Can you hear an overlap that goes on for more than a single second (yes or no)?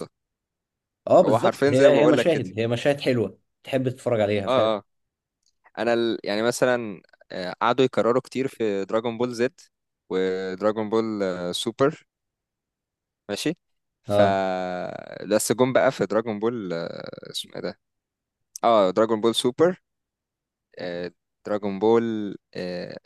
yes